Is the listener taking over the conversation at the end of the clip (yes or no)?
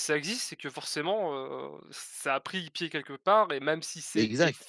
no